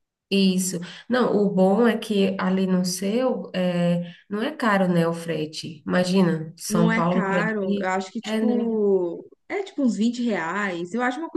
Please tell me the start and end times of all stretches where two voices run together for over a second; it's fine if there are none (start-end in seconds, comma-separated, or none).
6.7-8.8